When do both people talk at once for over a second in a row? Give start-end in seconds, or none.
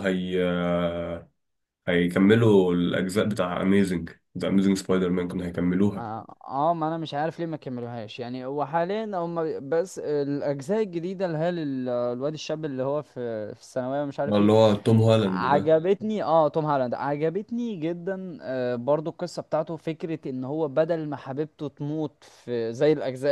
none